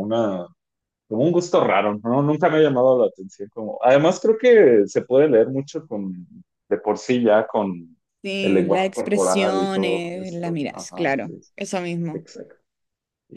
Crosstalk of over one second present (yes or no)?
yes